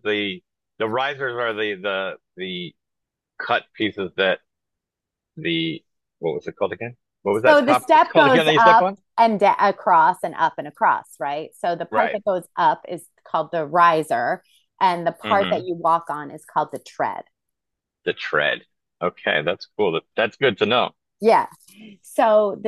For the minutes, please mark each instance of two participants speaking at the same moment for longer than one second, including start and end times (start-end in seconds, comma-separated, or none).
7.5-9.0